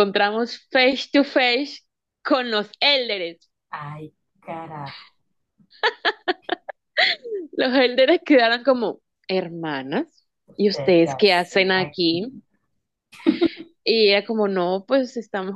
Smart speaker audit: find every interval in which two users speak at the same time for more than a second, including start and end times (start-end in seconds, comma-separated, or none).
10.5-12.3